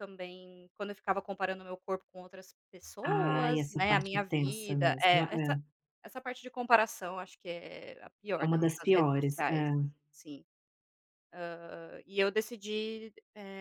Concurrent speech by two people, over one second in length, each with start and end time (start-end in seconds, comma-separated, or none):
3.0-5.6, 8.4-9.7